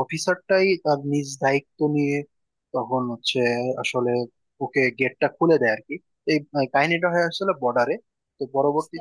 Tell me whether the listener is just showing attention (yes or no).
yes